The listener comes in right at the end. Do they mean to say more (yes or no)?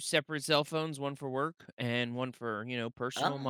yes